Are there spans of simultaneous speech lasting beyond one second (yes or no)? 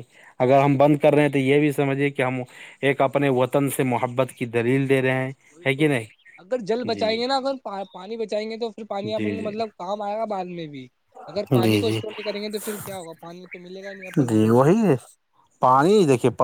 no